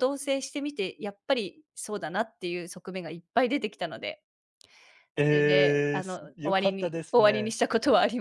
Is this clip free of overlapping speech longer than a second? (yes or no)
no